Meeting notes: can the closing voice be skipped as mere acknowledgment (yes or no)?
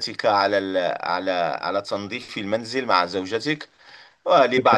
yes